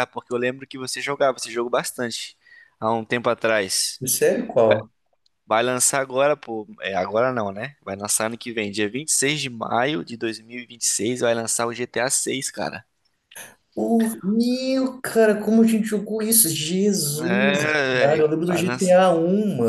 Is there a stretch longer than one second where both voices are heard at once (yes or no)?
yes